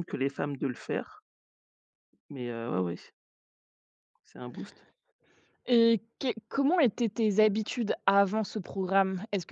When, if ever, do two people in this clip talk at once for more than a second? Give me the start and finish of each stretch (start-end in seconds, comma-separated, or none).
none